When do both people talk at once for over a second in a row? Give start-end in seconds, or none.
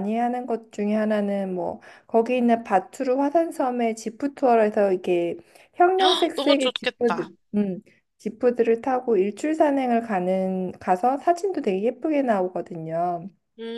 6.0-7.3